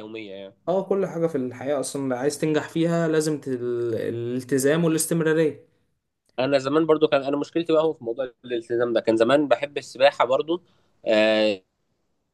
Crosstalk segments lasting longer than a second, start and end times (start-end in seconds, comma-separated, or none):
none